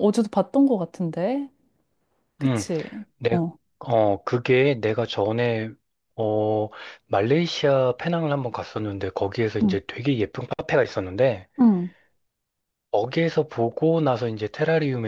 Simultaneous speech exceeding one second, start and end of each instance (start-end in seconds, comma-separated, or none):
none